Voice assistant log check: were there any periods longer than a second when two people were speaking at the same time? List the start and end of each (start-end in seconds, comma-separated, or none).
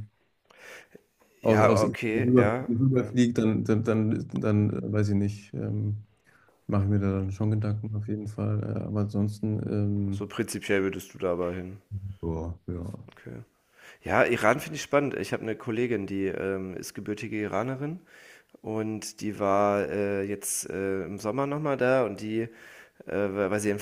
1.4-3.1